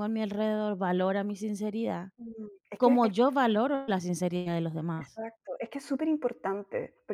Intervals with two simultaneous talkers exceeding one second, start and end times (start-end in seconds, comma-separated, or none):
none